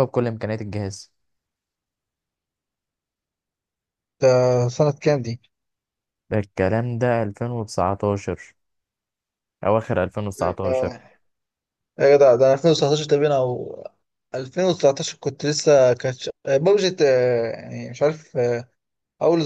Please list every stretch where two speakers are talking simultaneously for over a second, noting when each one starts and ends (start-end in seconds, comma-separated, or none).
none